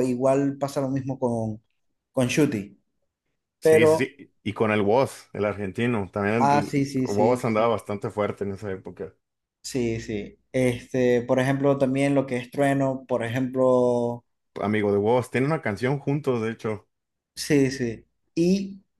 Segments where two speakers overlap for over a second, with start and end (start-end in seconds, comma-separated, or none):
6.4-7.8